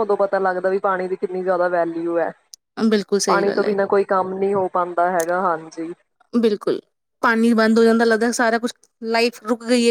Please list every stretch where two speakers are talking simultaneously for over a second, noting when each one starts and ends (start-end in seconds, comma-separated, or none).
none